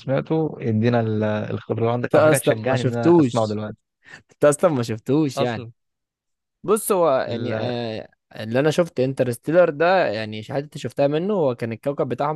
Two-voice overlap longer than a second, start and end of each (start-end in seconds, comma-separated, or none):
2.0-3.6